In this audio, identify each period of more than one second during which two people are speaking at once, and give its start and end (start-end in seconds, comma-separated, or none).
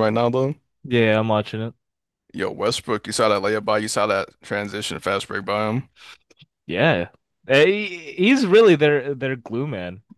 none